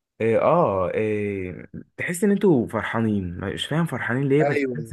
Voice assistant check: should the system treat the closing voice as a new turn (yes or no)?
yes